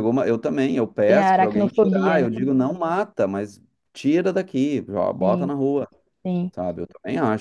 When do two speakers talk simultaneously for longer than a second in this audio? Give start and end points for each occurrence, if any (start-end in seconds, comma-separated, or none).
1.1-2.3